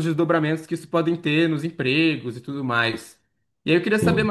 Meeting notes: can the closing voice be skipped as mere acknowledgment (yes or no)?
yes